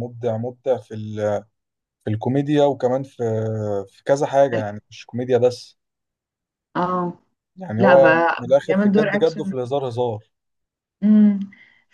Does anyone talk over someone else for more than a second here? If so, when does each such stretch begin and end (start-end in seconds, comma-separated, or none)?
7.8-9.5